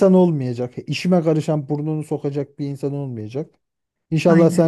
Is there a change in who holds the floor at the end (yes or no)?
no